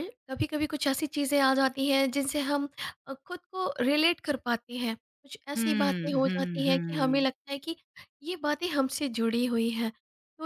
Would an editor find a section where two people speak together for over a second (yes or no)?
yes